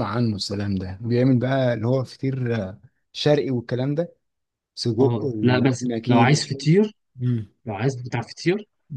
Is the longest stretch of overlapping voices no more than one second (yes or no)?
no